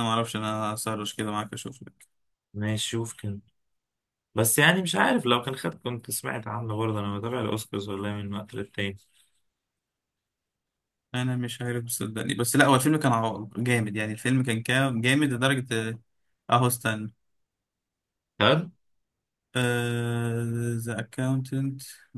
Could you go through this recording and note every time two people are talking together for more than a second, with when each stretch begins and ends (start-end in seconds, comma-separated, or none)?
none